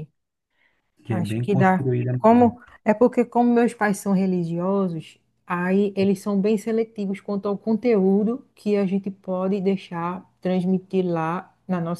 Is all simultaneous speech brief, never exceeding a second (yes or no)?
no